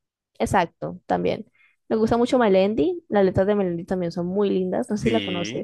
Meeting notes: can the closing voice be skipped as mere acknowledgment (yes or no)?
no